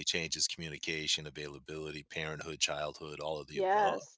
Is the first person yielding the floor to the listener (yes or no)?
yes